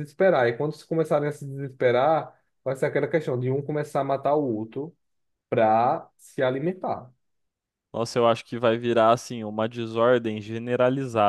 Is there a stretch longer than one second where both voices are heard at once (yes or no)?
no